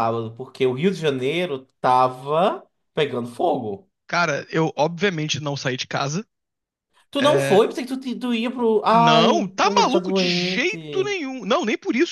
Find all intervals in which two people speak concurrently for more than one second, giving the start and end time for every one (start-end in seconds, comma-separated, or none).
8.9-11.2